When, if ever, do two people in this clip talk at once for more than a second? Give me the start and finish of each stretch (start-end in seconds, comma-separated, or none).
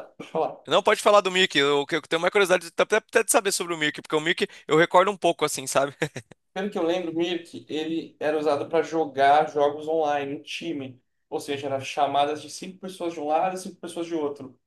none